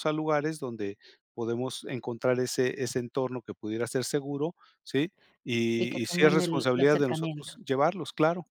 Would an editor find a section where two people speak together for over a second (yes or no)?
yes